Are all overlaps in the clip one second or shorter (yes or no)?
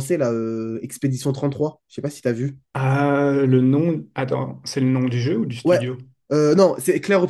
yes